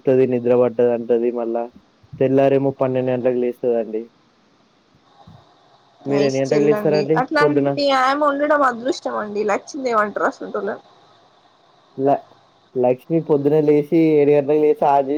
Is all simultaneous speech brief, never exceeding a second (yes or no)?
no